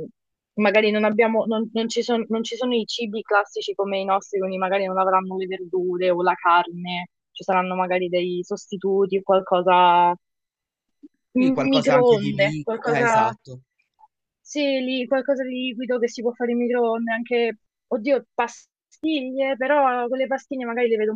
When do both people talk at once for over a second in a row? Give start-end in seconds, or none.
11.7-13.1